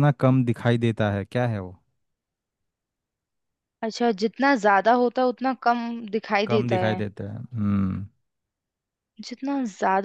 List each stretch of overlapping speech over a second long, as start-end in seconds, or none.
none